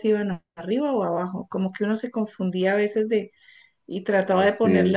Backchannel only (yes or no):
yes